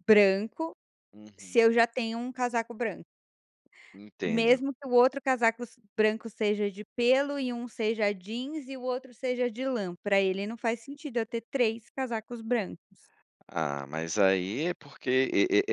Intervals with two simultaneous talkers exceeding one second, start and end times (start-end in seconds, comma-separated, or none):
none